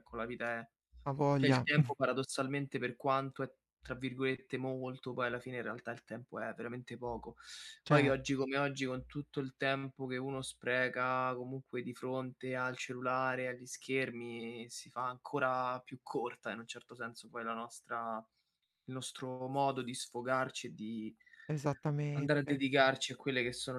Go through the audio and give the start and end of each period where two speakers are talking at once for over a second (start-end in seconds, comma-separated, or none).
none